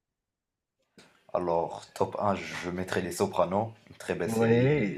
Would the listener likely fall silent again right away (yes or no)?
no